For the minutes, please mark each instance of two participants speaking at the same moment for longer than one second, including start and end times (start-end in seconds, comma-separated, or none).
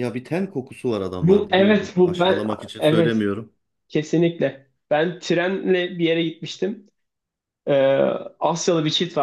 1.2-3.3